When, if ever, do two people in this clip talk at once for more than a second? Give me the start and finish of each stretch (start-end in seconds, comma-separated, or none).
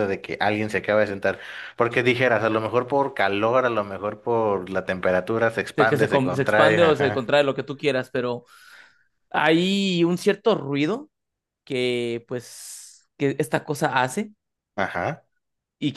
5.8-7.3